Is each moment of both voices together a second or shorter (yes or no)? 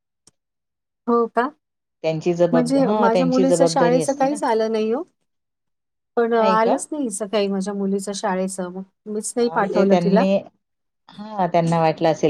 no